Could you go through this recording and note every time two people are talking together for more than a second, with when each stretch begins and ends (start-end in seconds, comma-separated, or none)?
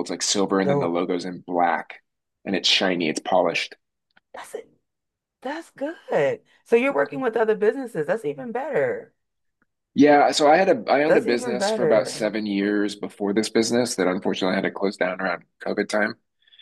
11.1-12.3